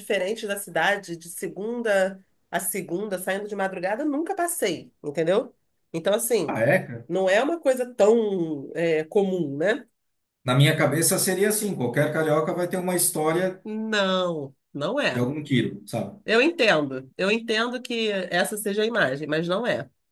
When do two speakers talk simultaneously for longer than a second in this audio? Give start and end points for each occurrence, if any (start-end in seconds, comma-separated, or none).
none